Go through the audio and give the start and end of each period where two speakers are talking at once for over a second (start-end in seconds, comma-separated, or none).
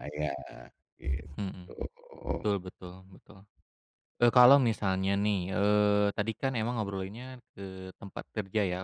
none